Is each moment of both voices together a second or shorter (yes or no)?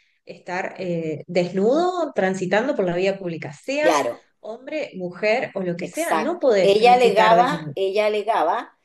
no